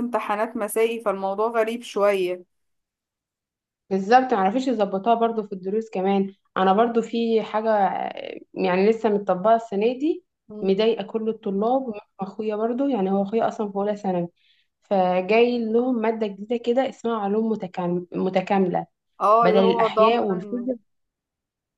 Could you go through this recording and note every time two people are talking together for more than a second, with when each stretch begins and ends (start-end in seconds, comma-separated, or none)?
19.4-20.7